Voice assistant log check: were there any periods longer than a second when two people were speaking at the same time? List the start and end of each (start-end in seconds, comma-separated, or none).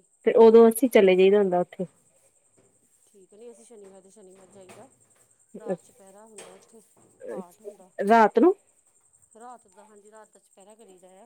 none